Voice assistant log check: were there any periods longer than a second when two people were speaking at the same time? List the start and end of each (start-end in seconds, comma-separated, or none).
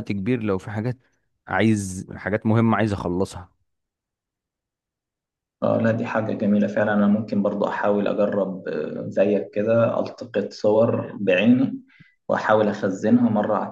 none